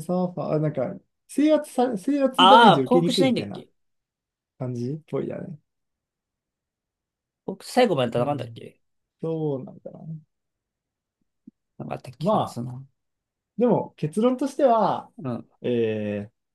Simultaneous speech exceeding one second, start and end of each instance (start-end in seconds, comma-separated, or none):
2.4-3.6